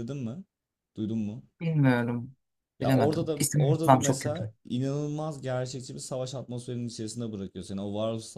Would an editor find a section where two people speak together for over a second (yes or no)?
yes